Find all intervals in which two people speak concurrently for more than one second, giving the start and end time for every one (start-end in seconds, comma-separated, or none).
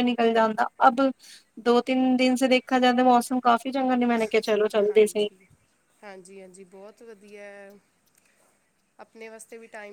none